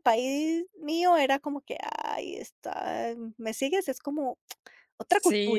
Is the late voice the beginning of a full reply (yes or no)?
yes